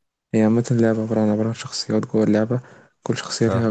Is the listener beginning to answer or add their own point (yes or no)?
no